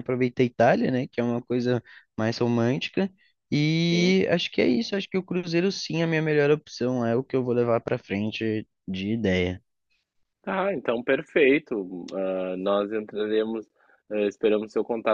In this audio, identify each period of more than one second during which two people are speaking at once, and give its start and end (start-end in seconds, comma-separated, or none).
none